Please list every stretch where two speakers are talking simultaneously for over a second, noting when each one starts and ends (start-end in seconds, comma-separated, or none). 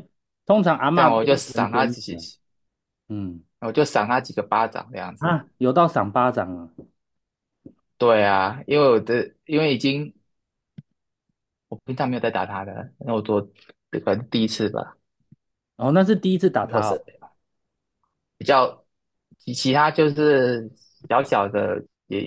0.9-2.2